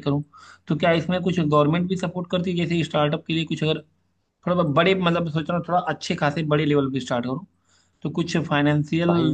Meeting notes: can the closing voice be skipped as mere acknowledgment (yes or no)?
yes